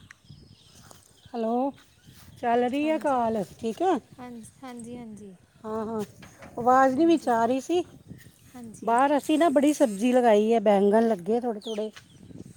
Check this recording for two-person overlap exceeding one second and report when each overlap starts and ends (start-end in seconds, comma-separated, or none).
none